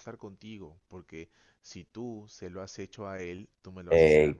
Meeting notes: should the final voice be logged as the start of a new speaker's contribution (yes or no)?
yes